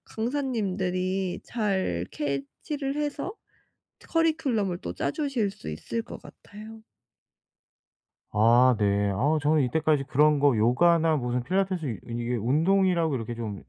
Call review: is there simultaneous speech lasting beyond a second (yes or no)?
no